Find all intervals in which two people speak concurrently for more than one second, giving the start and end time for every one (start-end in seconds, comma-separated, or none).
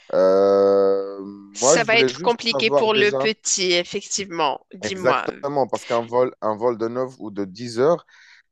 1.6-3.3